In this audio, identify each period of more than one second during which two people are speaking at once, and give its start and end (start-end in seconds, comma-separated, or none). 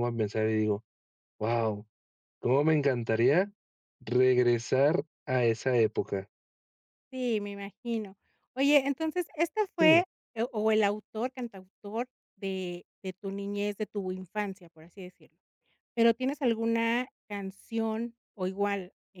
none